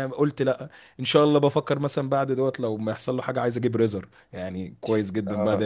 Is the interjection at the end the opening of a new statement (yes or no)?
yes